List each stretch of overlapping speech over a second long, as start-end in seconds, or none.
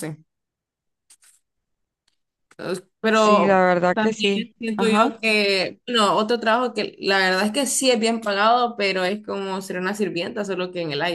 3.1-5.2